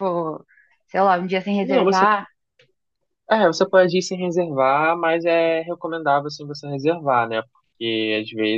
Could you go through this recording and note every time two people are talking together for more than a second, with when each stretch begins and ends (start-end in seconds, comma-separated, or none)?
none